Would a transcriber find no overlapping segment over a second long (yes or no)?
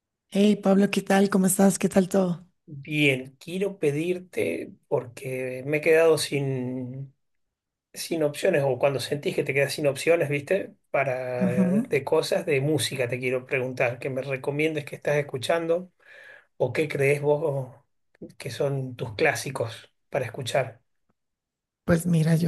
yes